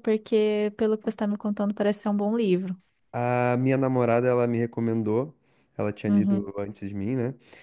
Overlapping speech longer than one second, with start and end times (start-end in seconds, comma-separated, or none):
none